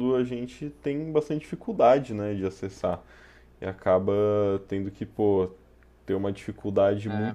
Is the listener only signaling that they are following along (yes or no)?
yes